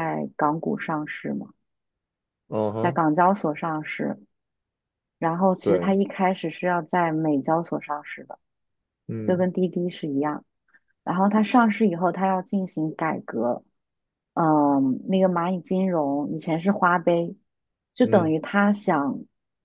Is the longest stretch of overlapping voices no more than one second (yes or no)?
yes